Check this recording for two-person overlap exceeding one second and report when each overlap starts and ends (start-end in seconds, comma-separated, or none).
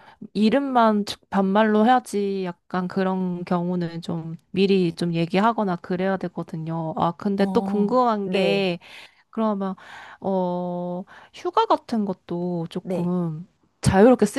7.4-8.7